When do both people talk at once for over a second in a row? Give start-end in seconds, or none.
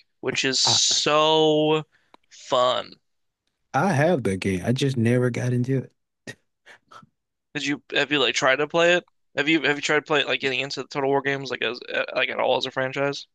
none